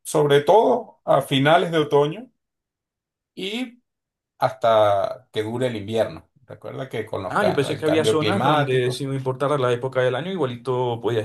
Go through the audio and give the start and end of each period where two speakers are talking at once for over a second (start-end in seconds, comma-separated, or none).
7.3-9.0